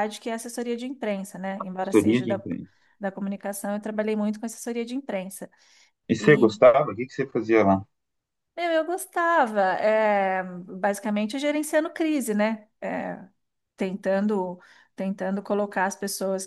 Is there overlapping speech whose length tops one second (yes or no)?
no